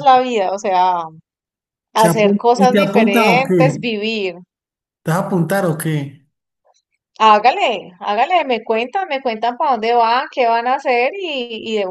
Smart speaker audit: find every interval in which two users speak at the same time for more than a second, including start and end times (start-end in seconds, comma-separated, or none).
1.9-3.8